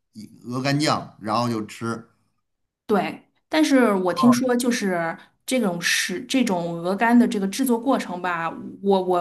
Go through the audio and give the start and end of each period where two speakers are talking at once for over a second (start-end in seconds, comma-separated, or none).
none